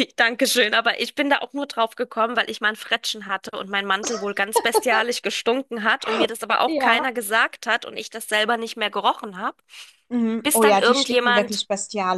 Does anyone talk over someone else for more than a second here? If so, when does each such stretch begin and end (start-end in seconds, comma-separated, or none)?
10.4-11.6